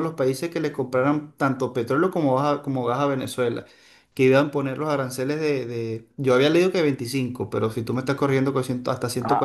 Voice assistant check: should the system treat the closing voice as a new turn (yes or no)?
yes